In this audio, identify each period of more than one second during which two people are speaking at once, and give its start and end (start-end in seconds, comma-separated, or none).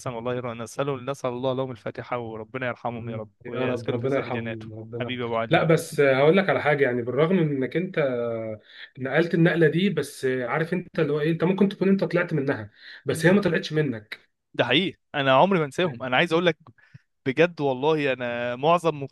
2.9-5.7